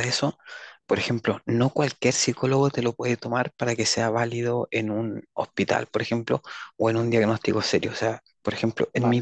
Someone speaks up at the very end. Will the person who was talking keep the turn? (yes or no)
yes